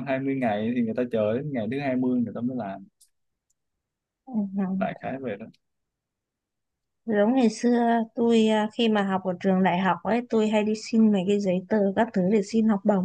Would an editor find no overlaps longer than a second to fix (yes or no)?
yes